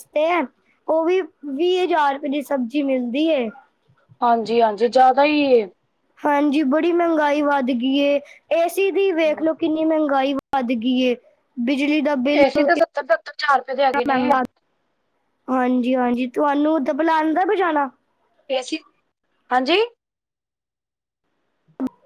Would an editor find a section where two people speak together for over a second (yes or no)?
no